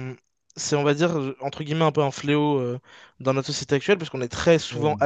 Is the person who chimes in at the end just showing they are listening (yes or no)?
yes